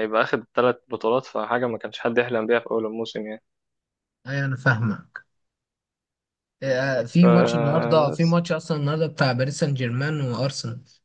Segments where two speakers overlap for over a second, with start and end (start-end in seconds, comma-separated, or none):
6.6-8.4